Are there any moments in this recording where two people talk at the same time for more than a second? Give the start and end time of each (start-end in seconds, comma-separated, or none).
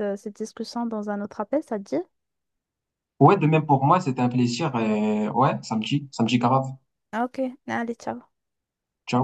none